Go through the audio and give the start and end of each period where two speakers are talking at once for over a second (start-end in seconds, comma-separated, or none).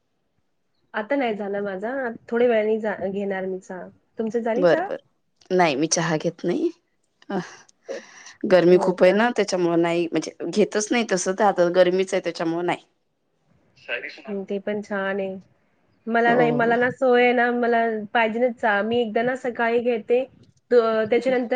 none